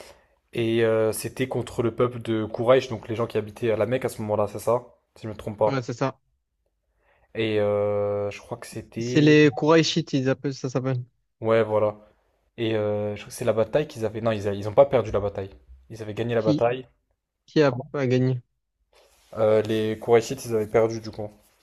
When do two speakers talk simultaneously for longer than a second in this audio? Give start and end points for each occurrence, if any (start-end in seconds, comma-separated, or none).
none